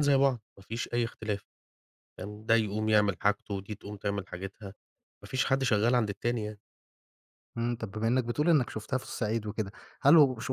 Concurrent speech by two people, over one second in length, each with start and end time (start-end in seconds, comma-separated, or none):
none